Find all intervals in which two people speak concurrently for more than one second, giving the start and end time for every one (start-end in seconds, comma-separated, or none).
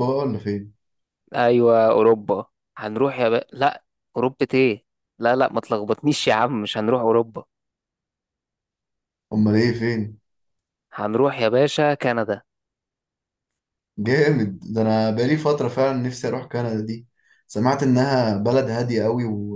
none